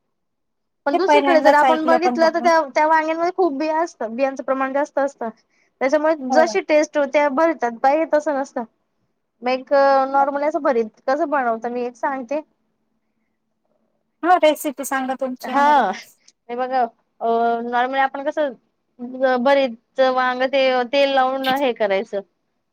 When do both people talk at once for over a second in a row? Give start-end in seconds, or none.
0.9-2.5